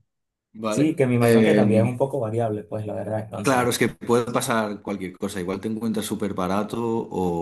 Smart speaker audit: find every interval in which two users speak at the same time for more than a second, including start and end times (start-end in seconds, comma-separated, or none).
0.7-2.0